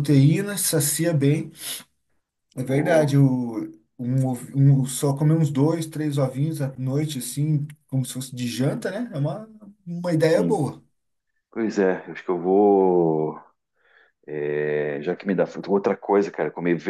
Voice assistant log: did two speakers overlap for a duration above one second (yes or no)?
no